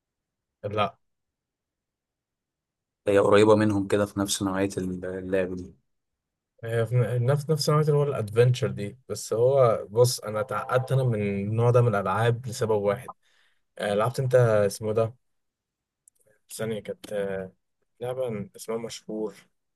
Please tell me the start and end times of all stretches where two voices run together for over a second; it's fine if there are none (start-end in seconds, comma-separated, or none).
none